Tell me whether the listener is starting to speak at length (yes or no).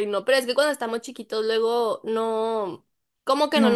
no